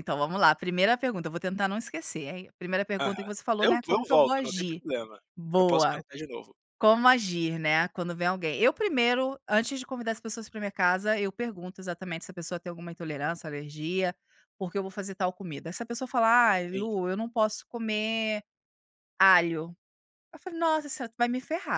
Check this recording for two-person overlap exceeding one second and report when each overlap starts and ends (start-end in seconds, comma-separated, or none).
3.0-4.8